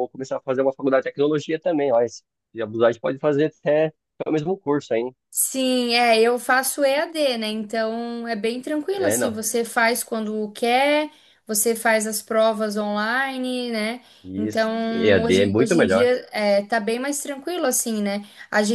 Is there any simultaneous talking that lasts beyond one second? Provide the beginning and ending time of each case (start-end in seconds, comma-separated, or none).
14.4-16.1